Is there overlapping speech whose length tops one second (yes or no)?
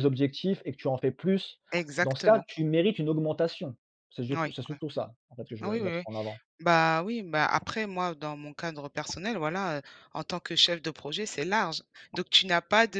no